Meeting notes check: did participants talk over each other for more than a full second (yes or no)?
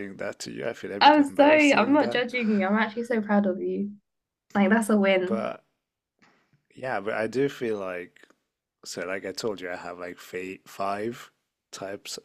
yes